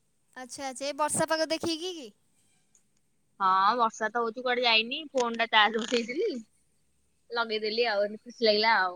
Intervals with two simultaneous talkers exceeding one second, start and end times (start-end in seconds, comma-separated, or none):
none